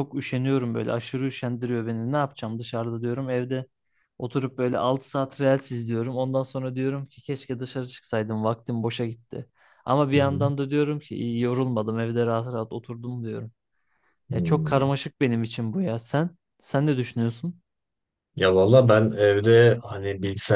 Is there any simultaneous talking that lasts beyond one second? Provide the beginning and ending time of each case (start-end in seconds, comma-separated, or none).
none